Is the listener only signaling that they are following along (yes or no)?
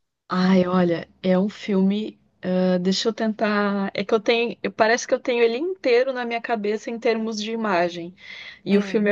yes